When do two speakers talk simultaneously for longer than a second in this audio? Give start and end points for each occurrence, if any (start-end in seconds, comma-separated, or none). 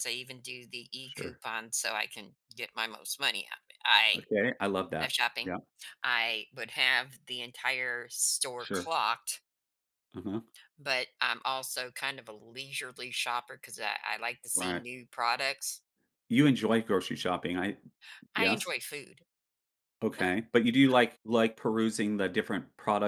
none